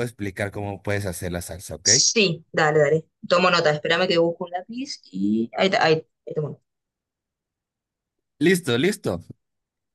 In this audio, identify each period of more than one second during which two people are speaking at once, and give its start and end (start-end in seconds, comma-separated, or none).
none